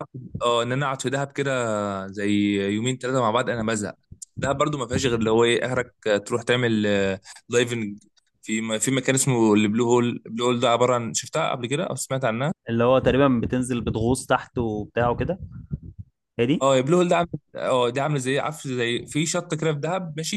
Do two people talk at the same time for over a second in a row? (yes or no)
no